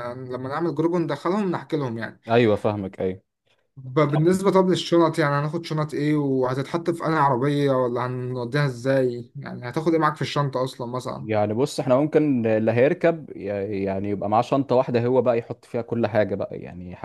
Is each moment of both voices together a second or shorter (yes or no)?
yes